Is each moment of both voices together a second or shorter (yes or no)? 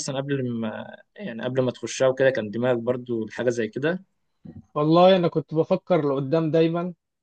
yes